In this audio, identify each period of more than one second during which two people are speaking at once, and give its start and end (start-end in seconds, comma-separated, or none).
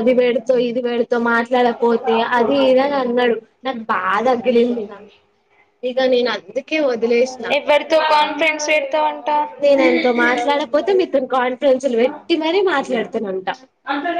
none